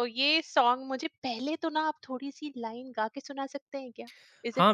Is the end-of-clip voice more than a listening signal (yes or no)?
yes